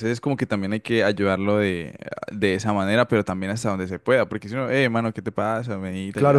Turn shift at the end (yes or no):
yes